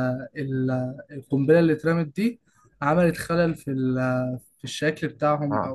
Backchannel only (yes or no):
no